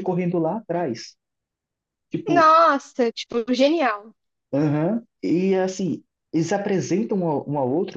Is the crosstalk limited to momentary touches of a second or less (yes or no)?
yes